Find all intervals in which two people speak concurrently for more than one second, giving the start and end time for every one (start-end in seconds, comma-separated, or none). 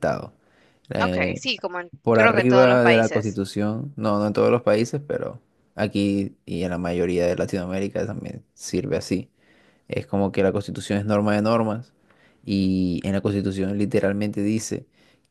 2.0-3.4